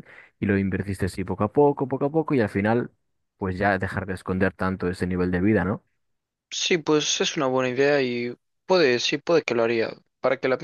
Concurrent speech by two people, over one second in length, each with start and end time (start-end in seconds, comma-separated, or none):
none